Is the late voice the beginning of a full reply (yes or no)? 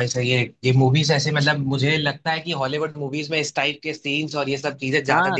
yes